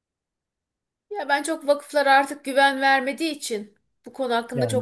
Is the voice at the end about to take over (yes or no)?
no